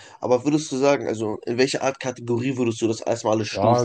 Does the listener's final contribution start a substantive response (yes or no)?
yes